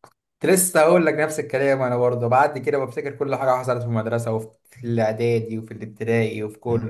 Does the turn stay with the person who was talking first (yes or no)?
no